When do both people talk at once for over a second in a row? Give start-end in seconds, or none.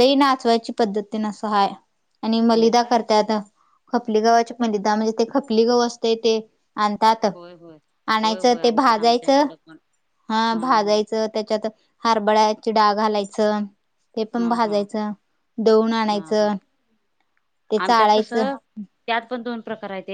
8.2-9.4